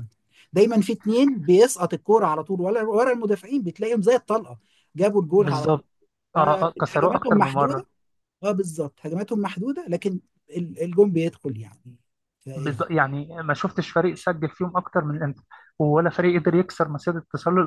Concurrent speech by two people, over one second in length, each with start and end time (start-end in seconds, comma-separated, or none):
6.4-7.8